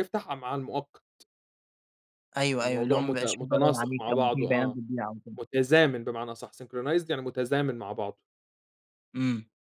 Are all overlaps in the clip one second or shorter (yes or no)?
no